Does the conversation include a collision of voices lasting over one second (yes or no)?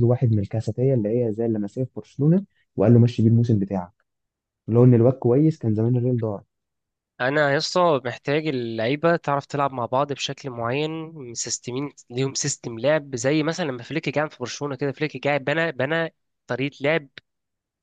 no